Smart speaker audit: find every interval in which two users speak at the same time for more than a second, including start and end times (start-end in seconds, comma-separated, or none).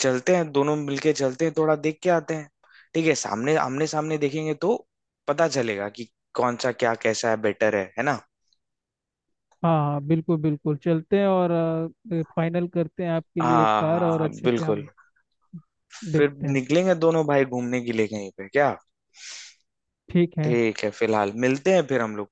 13.4-14.8